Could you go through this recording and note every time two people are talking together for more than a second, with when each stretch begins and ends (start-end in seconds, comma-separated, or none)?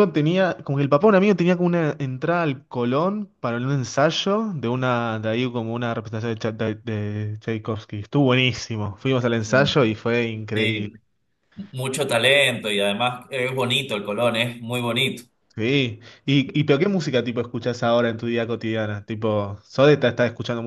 none